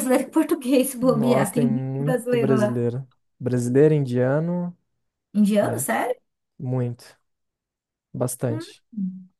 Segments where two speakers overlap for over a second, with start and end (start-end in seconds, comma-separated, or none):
1.0-2.8